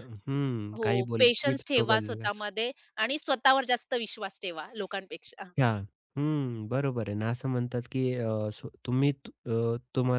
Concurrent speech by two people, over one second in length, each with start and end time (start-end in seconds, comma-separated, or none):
0.8-2.4